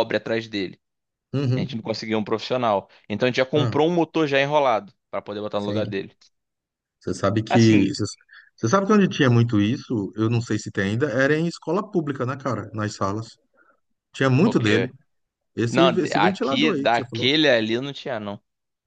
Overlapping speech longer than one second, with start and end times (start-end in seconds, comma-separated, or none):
15.7-17.3